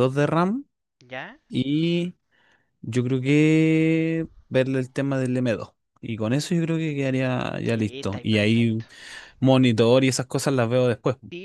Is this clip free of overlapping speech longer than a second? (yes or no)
no